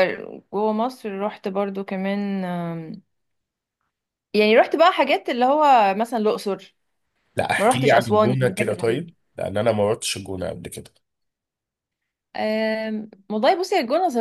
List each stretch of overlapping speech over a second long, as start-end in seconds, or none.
7.6-9.1